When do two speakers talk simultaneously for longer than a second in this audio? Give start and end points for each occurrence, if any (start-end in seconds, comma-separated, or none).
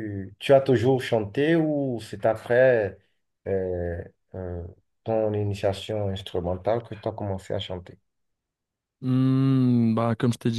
none